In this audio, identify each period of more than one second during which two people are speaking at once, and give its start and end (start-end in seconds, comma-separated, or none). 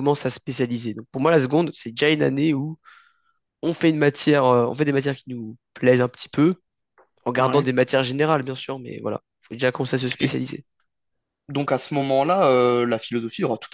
none